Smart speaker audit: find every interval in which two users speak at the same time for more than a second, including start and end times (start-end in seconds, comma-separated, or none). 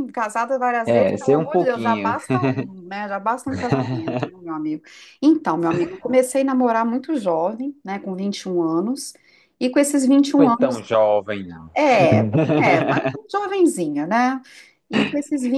0.9-2.1